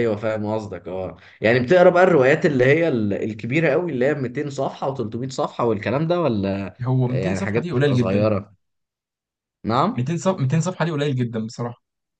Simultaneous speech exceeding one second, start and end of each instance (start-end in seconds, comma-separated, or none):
6.8-8.3